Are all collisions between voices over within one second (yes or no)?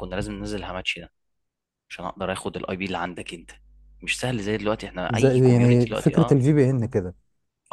no